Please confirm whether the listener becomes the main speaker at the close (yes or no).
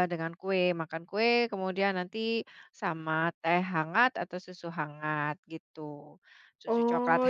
yes